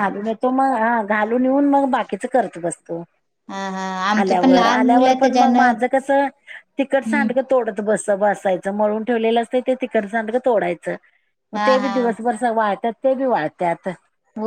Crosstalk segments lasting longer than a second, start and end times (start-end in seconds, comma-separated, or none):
4.2-5.7